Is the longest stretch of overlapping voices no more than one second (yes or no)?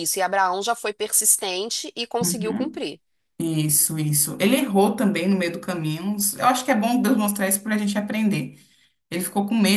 yes